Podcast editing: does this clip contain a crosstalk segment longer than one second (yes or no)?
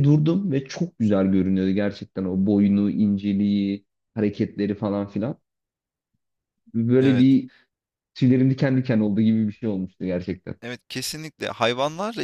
no